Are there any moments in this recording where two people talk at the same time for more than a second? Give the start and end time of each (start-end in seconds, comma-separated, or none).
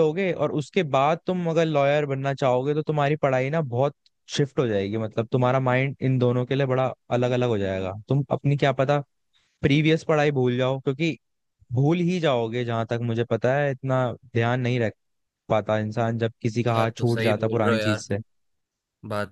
16.7-18.2